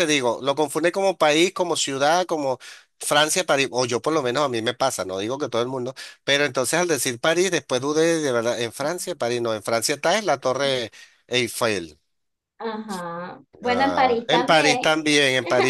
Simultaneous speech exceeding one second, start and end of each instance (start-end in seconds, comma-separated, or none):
13.6-14.9